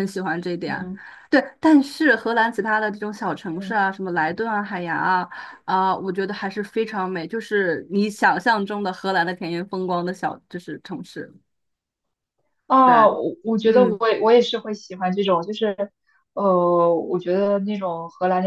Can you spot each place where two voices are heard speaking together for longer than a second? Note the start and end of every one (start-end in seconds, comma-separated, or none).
none